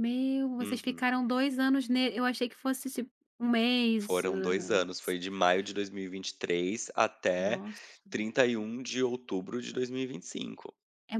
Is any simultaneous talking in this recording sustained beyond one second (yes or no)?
yes